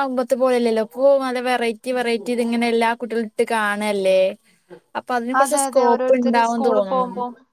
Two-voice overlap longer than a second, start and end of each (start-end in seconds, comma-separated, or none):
5.4-7.0